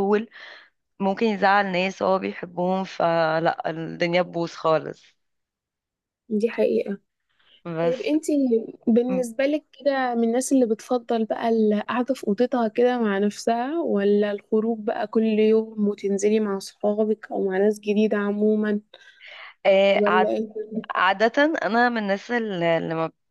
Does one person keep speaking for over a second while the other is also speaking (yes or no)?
no